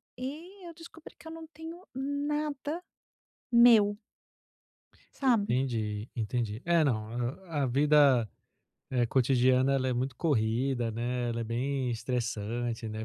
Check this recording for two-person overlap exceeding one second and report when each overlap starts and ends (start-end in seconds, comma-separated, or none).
none